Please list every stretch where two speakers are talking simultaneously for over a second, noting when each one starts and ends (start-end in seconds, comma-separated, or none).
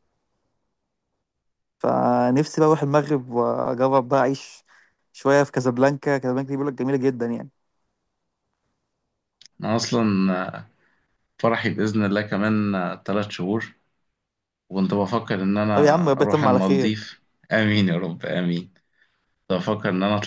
15.7-16.9